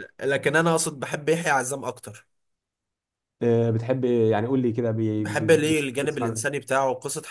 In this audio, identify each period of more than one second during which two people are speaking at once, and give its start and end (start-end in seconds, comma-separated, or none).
5.2-6.6